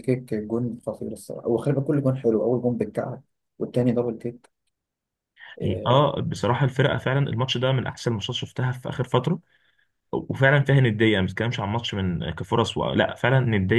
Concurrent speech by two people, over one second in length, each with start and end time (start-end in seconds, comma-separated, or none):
none